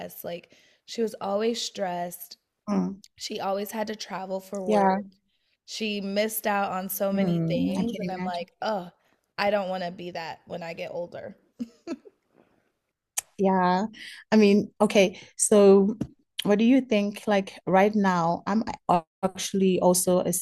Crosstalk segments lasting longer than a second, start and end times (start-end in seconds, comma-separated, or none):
7.1-8.5